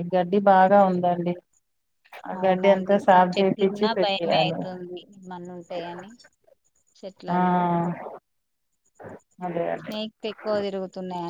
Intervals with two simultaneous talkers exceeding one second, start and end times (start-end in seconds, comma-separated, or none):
2.4-4.6